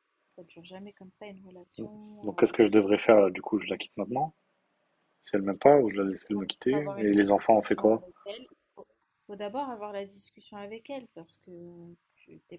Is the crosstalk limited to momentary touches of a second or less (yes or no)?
no